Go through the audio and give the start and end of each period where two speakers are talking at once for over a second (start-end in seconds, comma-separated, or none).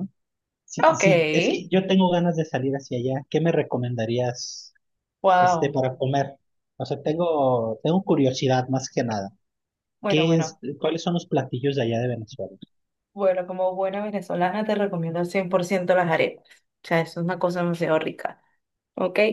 none